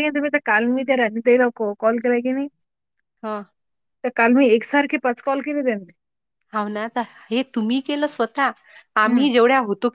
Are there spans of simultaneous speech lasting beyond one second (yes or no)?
no